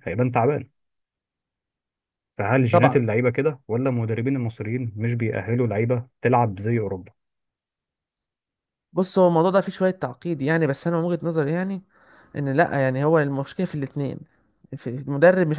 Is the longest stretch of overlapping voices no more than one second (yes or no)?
yes